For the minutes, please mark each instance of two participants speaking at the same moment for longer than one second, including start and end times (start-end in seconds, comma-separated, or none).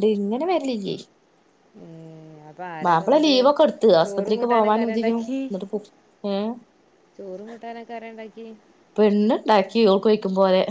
4.0-5.4